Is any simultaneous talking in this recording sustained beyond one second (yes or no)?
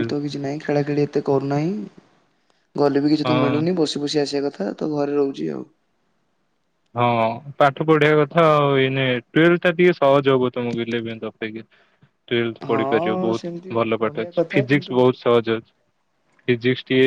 yes